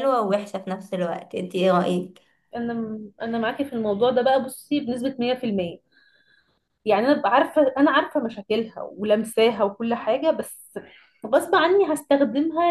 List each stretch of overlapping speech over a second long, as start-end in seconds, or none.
none